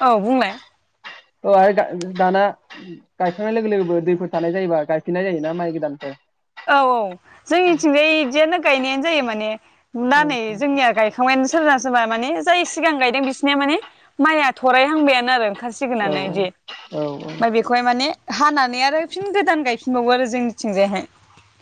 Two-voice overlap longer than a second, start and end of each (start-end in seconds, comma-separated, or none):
16.1-17.4